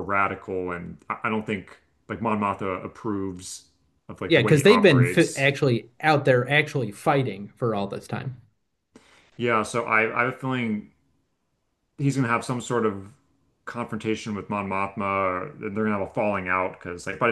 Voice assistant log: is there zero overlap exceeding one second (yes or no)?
no